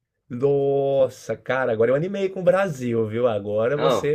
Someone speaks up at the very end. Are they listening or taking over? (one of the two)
listening